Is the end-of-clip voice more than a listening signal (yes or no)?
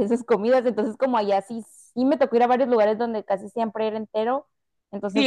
yes